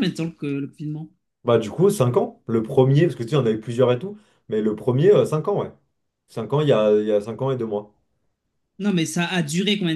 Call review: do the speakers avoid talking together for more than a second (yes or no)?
yes